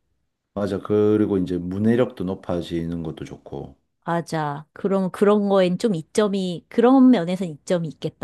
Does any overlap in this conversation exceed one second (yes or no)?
no